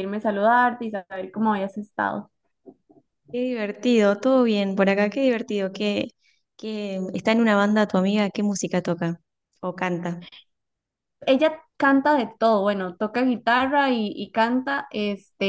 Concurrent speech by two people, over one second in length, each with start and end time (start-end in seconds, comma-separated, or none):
none